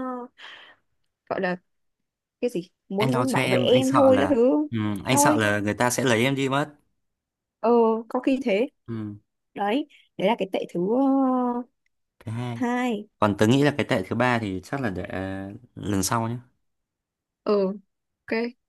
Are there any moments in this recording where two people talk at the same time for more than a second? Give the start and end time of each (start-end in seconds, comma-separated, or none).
3.0-4.3